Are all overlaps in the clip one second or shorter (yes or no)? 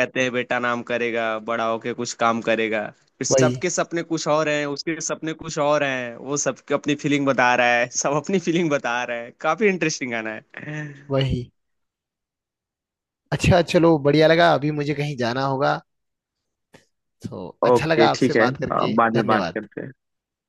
no